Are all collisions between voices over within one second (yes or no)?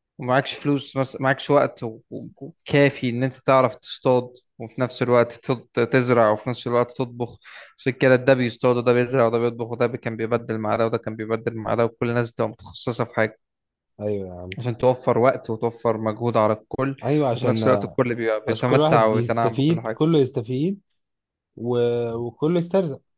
no